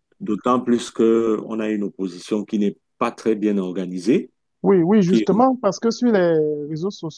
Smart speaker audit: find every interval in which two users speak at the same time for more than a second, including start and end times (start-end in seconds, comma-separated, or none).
none